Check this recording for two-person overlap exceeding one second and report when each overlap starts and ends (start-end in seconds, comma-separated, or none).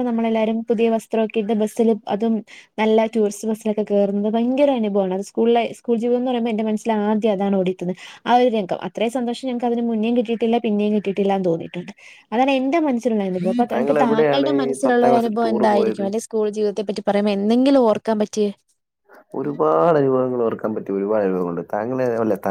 13.7-16.0